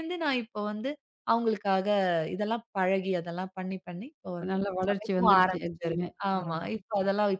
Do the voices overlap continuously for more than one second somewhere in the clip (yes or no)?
yes